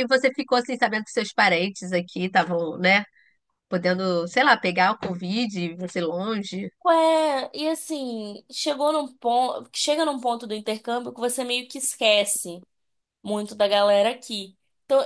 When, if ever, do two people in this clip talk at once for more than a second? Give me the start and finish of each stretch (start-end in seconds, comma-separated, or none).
none